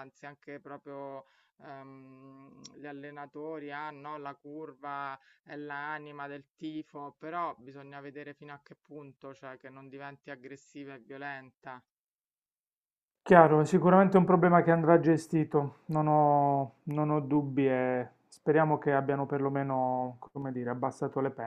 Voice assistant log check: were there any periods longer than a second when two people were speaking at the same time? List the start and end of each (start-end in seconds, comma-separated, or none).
none